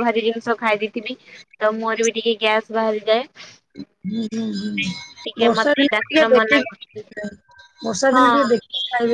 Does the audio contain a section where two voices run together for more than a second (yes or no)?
yes